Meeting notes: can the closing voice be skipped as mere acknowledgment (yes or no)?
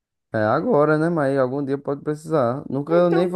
no